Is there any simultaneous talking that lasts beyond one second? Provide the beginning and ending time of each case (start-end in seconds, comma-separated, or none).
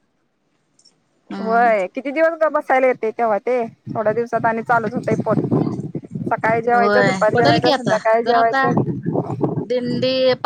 6.7-8.7